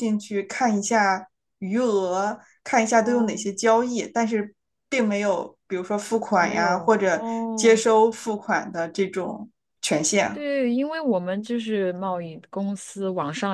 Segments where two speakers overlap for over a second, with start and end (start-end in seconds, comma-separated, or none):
6.4-7.8